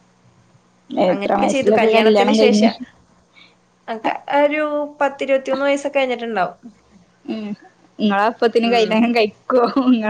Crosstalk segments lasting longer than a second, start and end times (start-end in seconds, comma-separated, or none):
1.1-2.6